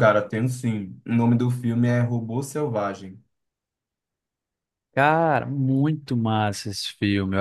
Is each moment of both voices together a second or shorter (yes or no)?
yes